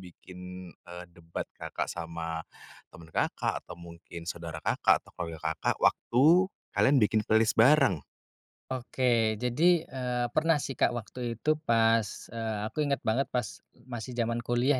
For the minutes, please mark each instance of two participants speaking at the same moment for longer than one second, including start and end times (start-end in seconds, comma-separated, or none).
none